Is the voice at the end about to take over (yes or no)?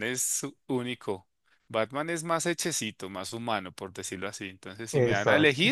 no